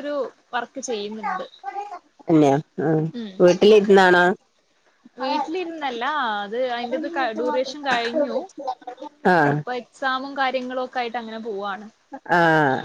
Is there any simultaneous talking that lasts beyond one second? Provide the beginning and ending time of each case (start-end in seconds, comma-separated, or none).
none